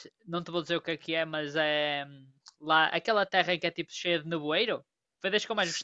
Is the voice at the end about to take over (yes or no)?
yes